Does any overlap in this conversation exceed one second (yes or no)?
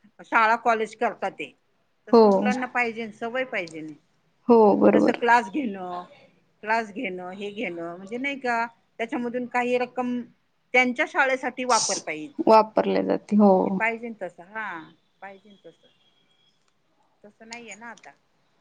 no